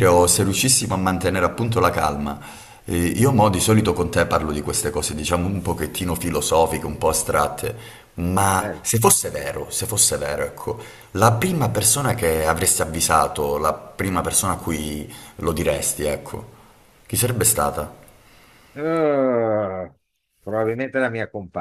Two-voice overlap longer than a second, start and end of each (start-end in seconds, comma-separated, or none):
none